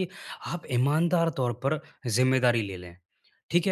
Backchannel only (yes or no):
yes